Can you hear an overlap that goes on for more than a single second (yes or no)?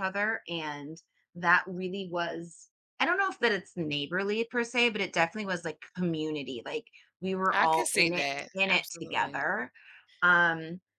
yes